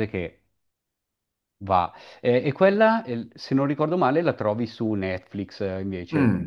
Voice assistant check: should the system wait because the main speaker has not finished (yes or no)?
no